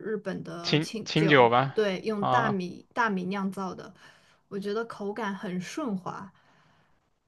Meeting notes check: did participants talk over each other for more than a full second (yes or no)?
yes